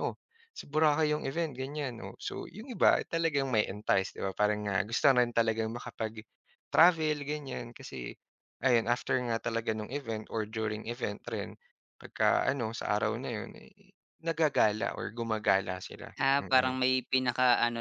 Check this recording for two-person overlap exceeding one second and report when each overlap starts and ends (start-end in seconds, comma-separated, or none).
none